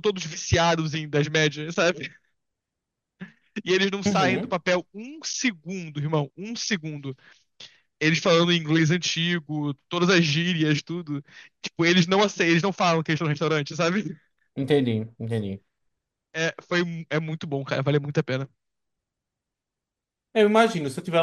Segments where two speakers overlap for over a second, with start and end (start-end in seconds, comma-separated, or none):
none